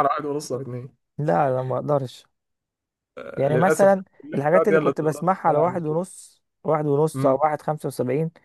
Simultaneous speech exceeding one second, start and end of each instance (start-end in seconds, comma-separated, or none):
3.5-6.0